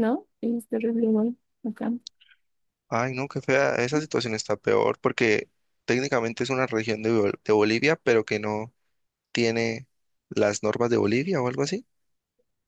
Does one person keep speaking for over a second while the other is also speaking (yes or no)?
no